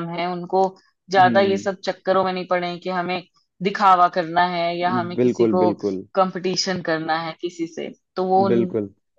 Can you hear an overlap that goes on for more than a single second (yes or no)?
no